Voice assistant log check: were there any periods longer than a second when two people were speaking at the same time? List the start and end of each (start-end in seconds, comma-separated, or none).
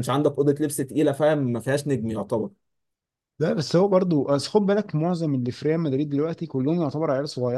none